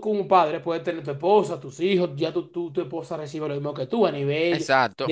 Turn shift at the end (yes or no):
no